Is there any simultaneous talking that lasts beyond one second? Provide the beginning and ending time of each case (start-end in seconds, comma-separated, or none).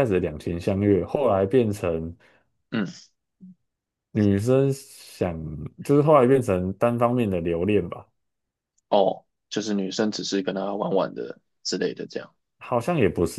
none